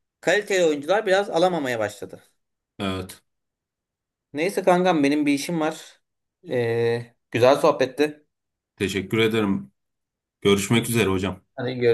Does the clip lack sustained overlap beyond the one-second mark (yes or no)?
yes